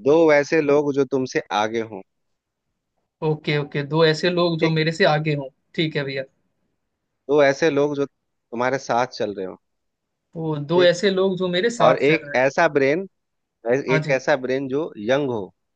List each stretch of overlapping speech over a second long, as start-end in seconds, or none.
none